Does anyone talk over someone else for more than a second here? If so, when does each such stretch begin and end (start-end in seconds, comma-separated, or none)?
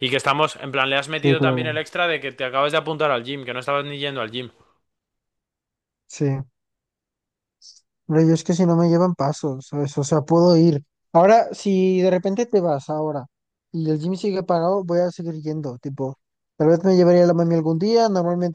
none